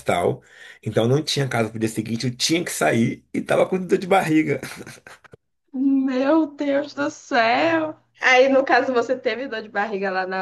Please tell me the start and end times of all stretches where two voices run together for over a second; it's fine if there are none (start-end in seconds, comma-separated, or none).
none